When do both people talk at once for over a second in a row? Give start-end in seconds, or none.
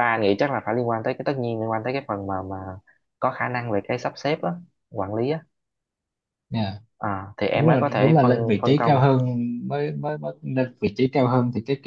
7.5-9.0